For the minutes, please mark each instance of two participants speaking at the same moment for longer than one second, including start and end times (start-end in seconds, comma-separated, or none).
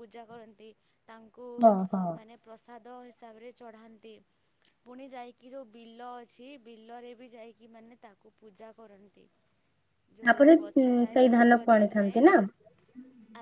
10.3-12.2